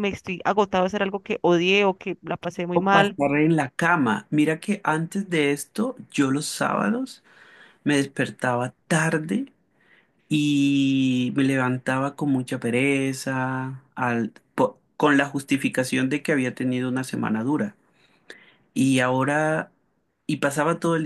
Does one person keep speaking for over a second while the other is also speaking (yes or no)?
no